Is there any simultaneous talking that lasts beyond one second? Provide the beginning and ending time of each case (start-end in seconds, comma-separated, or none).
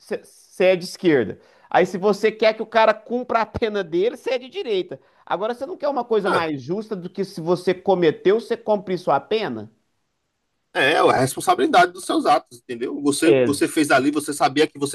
none